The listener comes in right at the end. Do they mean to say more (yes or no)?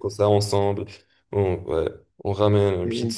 no